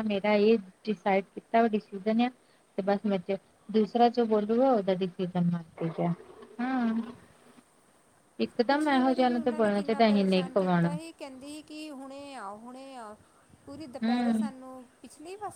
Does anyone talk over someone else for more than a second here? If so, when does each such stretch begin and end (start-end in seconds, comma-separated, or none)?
8.7-10.9